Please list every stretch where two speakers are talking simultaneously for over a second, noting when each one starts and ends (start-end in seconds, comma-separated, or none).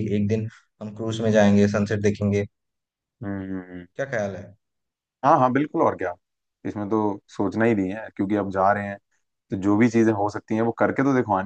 none